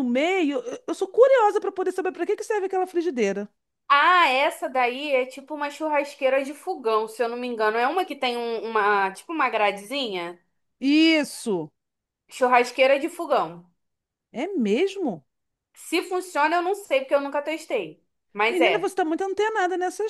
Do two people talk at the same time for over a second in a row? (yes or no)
no